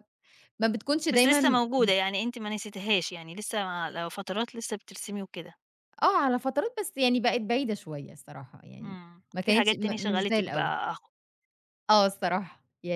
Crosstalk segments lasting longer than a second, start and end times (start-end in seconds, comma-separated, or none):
8.8-10.7